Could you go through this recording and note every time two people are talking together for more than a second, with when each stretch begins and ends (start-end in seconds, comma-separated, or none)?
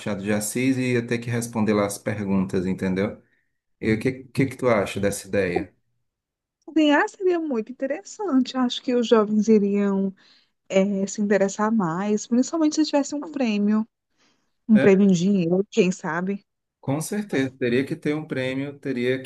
none